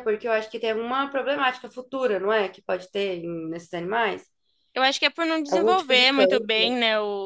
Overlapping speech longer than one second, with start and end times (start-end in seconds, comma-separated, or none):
5.5-6.7